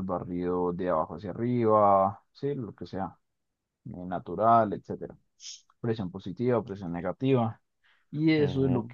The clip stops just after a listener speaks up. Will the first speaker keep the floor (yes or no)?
yes